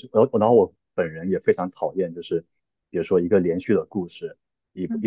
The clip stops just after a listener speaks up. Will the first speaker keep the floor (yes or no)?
yes